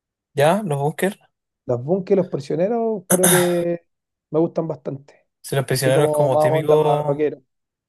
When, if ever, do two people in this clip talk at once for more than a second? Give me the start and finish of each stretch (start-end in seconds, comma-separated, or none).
5.7-7.4